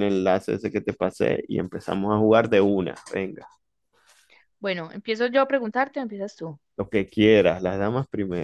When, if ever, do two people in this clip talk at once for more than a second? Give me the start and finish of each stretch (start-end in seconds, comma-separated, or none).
none